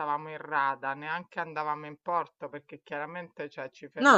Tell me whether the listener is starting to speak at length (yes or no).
no